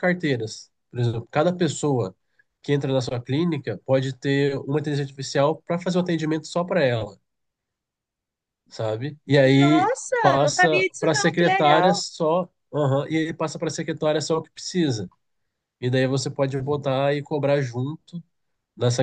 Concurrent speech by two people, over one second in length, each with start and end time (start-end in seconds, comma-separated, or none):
9.6-12.0